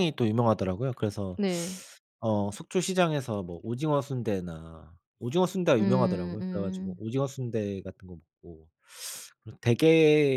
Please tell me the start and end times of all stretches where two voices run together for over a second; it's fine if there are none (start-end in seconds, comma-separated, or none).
5.8-7.0